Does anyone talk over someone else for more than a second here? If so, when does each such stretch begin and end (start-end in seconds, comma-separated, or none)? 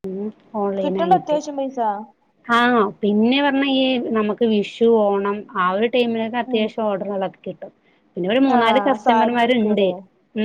8.6-9.9